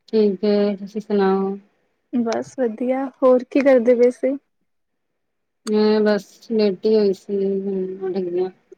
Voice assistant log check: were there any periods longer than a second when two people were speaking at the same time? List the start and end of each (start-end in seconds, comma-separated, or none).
none